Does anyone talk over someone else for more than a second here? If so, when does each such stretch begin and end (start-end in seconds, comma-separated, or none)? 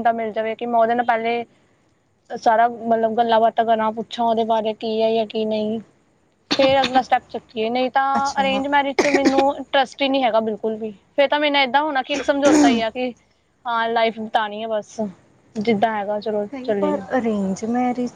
none